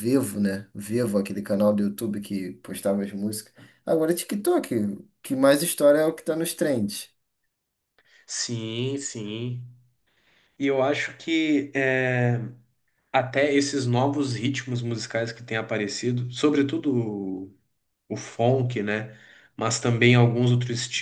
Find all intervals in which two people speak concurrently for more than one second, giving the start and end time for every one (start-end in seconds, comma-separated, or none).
none